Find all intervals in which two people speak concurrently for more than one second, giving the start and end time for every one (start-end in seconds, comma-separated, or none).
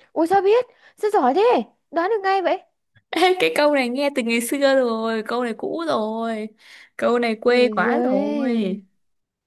7.5-8.8